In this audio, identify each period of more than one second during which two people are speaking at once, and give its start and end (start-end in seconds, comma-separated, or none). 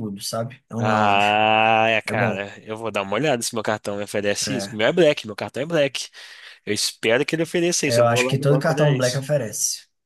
7.8-9.3